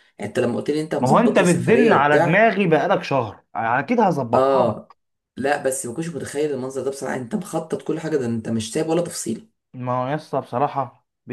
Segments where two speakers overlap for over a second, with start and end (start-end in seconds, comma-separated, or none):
1.0-2.5